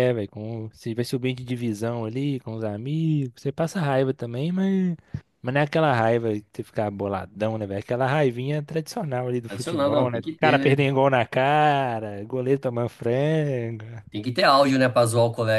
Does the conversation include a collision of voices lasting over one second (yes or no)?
yes